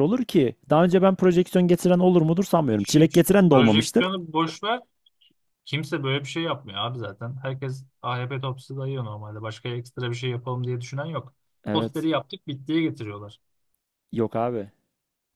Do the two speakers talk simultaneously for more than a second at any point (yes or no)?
yes